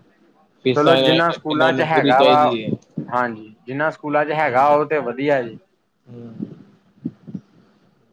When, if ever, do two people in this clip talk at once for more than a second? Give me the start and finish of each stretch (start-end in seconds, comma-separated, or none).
0.8-2.4